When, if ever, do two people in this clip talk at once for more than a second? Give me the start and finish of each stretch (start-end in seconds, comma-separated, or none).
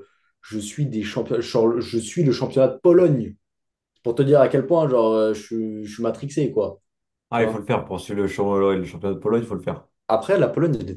none